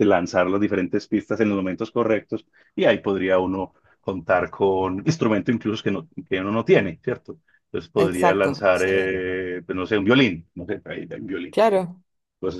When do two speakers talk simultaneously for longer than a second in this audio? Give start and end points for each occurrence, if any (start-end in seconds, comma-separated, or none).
8.0-9.2